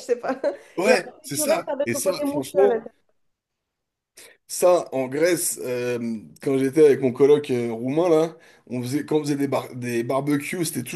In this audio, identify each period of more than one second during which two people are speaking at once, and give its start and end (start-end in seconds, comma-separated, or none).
0.8-2.9